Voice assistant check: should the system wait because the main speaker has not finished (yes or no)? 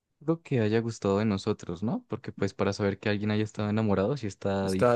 no